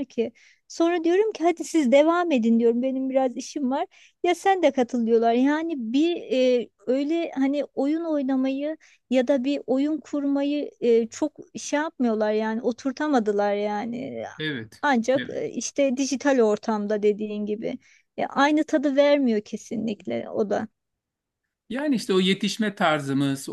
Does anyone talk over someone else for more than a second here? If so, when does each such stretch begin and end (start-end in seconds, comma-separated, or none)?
none